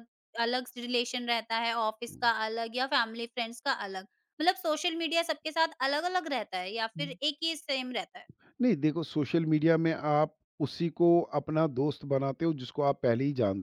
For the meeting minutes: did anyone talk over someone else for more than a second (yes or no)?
no